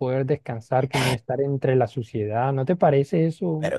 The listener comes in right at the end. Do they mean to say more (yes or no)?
yes